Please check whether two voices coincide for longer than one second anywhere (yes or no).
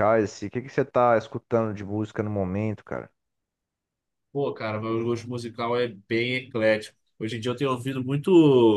no